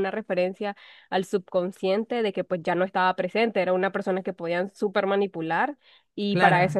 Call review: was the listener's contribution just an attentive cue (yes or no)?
yes